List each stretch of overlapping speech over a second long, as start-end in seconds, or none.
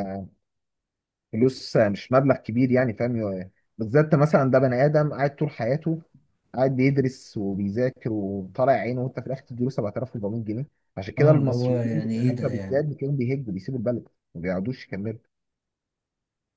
11.2-12.8